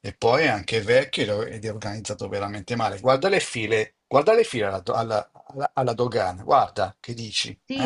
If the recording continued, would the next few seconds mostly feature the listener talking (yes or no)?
yes